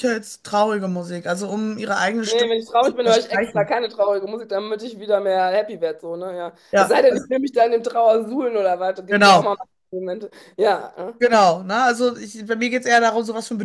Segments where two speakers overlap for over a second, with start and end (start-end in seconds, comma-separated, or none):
2.3-3.7